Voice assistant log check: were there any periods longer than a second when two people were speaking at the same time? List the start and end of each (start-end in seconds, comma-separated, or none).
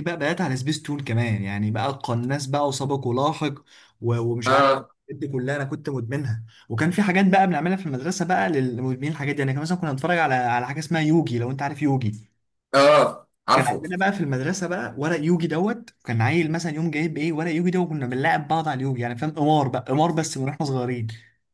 none